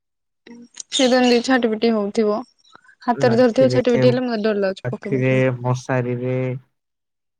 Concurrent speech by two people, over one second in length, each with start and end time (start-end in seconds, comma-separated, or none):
3.3-5.4